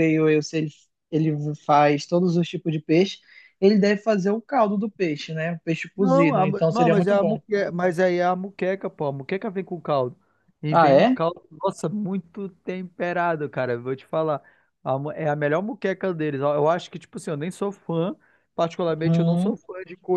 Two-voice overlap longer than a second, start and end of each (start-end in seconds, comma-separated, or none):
6.0-7.4